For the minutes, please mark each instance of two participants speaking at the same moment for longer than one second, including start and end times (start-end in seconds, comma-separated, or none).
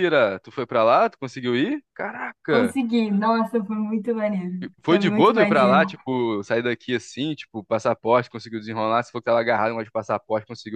4.6-5.9